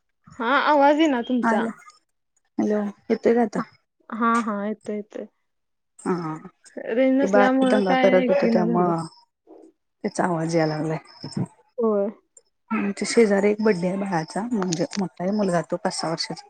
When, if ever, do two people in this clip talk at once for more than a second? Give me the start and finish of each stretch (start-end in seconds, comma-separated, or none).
7.2-8.9